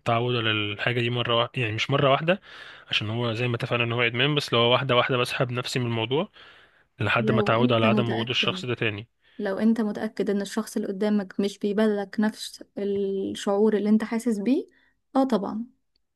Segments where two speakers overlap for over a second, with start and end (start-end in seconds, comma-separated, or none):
7.2-8.6